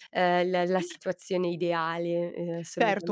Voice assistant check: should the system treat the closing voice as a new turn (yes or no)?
yes